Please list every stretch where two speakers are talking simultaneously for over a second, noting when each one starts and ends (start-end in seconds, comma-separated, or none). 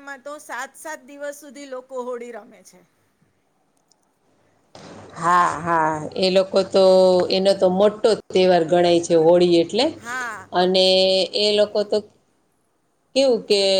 none